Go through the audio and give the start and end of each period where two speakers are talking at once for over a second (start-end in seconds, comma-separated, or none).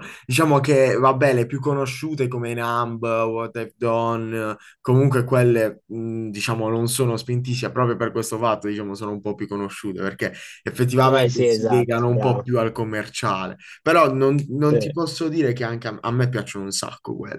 11.0-12.5